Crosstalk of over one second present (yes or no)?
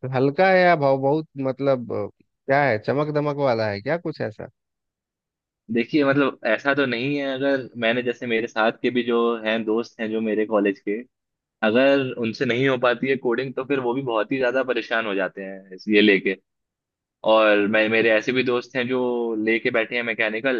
no